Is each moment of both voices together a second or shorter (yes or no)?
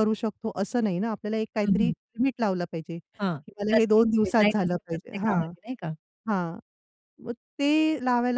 no